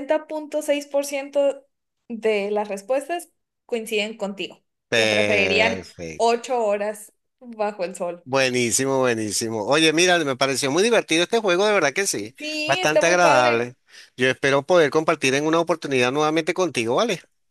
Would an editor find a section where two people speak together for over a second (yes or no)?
yes